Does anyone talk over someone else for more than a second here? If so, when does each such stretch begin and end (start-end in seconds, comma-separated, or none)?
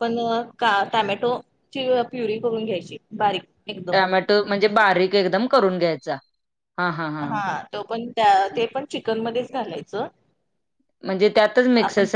none